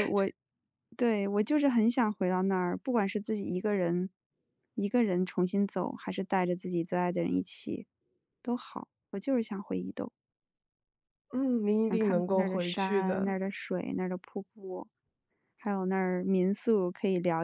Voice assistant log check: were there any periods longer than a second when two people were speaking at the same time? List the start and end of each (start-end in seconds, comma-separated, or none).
11.8-13.4